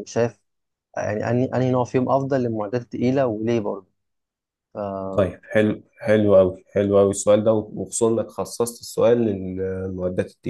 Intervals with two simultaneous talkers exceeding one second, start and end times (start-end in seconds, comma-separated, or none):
none